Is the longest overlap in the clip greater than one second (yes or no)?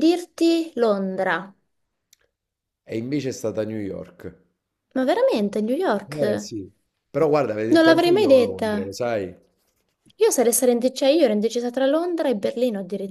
yes